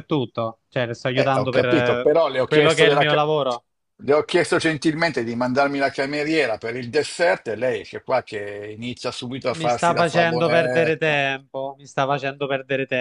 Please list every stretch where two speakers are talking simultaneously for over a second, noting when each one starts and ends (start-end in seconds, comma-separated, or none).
1.1-3.2, 9.5-11.2